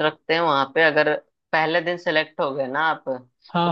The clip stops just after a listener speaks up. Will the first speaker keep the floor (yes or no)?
yes